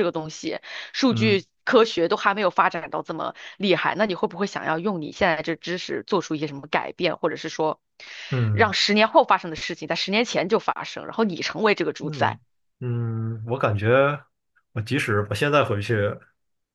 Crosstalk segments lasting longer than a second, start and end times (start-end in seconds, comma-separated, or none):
none